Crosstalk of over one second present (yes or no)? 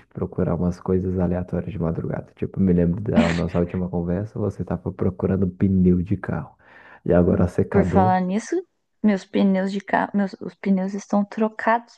no